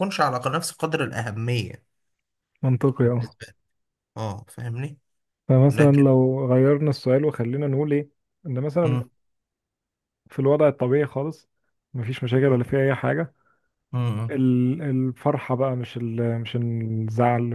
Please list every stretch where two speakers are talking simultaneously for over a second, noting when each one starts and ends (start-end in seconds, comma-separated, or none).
none